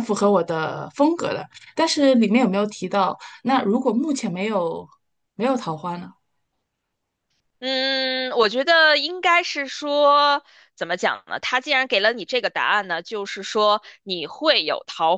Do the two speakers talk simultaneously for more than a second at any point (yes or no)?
no